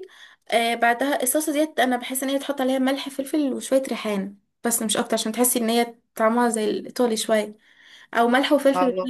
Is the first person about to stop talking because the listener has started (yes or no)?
no